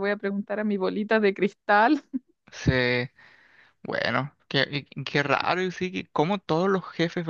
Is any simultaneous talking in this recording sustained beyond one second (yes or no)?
no